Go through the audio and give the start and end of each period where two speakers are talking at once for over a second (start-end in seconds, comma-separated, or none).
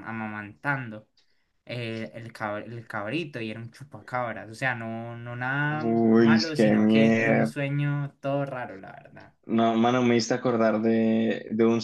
5.7-7.5